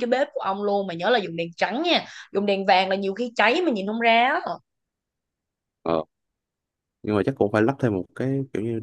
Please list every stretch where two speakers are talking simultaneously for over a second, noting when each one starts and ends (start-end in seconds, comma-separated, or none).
none